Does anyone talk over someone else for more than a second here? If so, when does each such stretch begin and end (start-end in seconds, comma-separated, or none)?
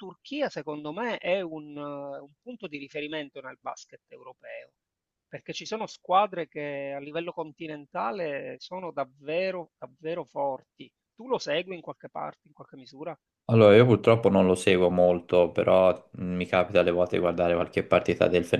none